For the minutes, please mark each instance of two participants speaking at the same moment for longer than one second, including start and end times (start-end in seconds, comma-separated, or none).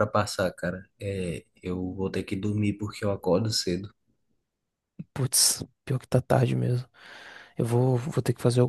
none